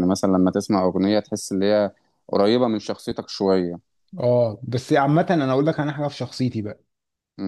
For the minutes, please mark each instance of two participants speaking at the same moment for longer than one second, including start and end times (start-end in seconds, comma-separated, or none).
none